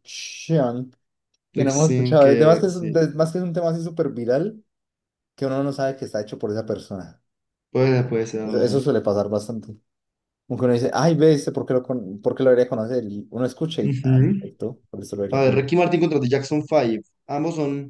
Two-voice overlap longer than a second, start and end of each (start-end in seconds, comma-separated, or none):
1.6-3.0